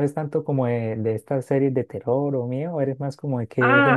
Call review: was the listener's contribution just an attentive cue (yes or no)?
no